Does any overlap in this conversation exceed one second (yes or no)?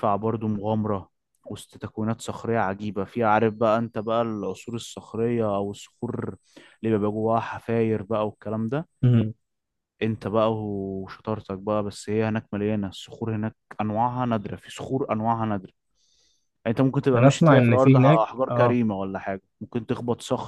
yes